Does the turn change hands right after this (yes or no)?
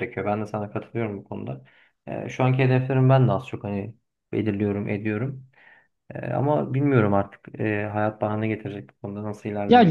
yes